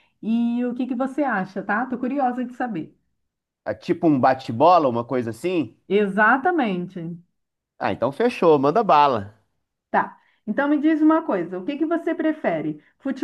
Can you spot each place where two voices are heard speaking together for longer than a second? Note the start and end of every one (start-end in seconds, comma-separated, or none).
none